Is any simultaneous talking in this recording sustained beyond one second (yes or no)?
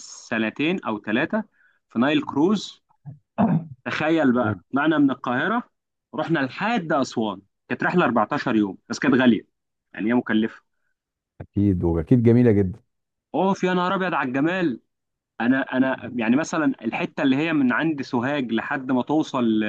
no